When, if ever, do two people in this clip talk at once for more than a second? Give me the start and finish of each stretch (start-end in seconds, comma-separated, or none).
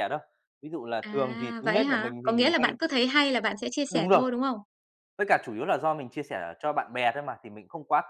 1.0-2.8